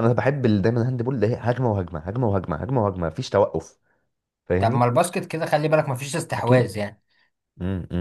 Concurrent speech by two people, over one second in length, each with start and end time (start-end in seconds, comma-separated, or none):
none